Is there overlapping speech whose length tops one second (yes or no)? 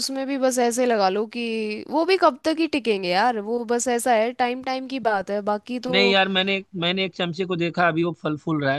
no